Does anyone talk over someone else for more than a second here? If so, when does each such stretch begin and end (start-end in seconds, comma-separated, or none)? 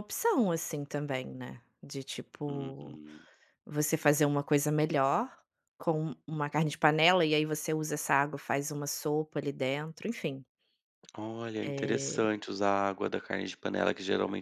none